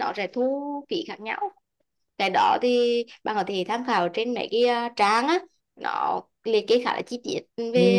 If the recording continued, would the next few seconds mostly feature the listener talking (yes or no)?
yes